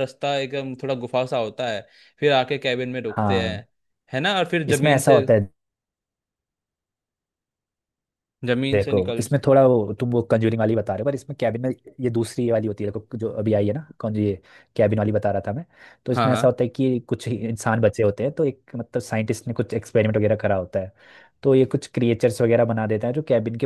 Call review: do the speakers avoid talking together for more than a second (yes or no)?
yes